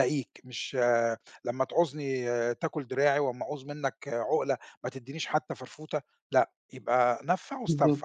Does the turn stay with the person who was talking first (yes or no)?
no